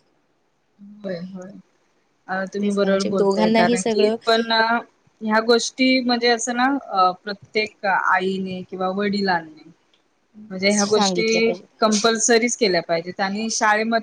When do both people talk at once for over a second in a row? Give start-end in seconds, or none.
2.6-4.2